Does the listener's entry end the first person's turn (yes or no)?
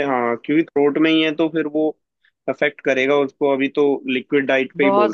no